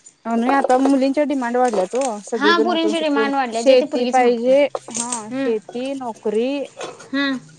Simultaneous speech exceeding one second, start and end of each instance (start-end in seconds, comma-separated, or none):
2.3-4.5